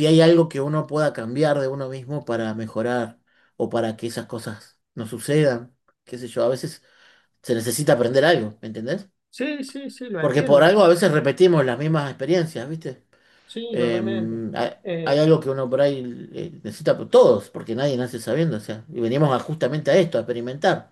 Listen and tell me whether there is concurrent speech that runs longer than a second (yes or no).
no